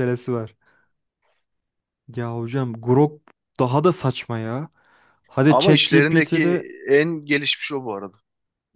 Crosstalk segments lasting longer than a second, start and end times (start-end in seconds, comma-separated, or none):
5.5-6.7